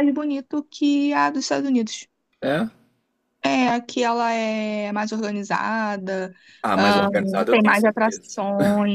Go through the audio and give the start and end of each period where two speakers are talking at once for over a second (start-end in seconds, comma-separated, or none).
6.8-8.4